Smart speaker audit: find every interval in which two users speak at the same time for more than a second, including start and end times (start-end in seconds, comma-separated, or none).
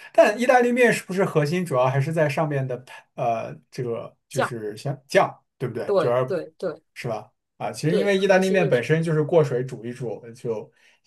7.9-9.1